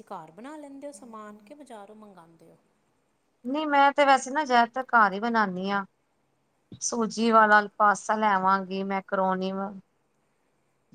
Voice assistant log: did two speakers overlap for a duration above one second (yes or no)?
no